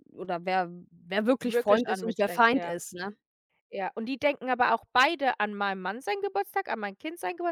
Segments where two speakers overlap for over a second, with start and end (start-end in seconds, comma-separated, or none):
1.4-2.7